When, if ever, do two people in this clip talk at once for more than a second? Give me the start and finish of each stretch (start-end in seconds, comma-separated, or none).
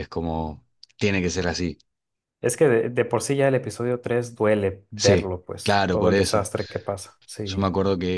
5.0-6.5